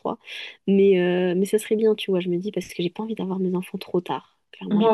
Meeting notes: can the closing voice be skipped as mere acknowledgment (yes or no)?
no